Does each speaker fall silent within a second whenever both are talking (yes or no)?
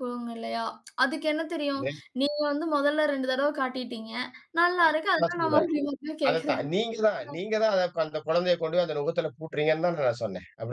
yes